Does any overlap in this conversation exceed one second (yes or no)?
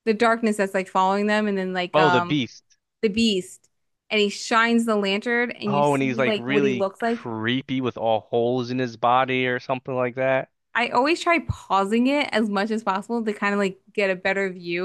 yes